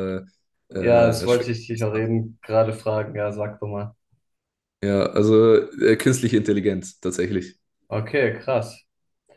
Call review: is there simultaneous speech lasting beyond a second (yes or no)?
yes